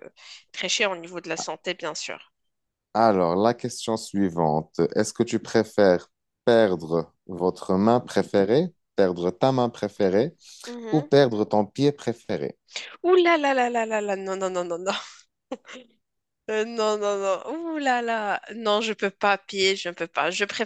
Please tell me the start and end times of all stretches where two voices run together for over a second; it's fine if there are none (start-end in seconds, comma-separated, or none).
none